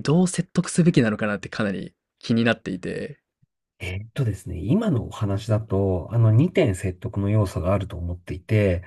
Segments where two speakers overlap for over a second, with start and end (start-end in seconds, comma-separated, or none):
none